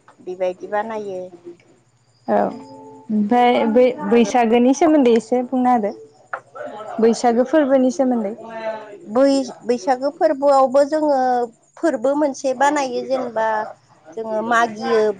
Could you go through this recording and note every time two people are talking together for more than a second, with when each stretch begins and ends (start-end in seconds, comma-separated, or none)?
none